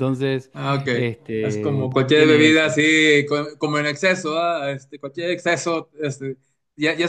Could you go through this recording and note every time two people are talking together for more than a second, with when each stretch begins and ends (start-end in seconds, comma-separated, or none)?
1.4-2.7